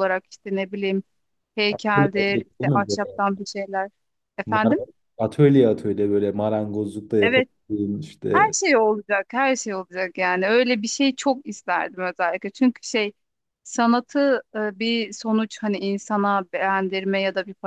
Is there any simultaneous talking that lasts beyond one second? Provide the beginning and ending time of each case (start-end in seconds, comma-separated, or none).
1.7-3.2